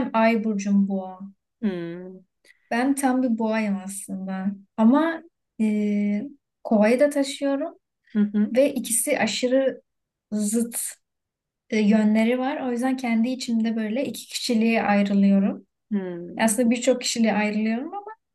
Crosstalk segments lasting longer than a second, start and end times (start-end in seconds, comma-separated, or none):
none